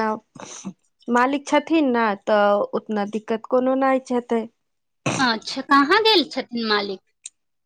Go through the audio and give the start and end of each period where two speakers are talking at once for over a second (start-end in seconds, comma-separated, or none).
none